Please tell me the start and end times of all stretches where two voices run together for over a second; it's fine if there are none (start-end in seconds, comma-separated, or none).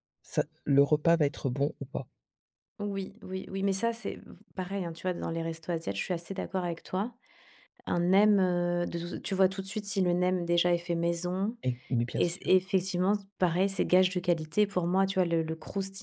none